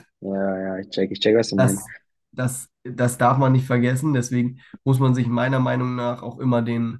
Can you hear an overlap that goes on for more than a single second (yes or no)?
no